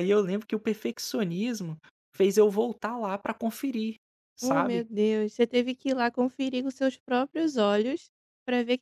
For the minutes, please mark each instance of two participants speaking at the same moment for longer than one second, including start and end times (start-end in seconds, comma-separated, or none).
none